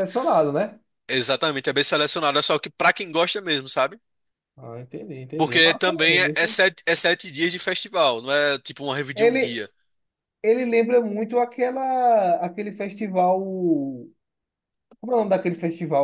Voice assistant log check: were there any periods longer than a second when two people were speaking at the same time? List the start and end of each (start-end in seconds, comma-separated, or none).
5.4-6.6